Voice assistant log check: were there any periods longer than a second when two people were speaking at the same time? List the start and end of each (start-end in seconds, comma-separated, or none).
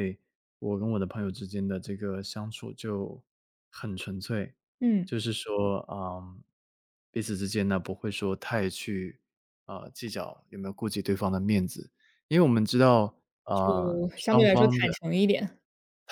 13.5-14.9